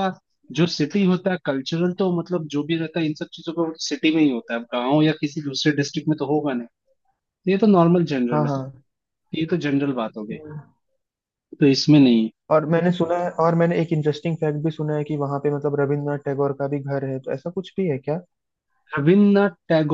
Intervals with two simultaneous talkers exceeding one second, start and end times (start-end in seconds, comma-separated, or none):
none